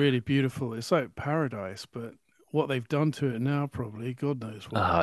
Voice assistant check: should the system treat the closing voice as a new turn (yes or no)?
yes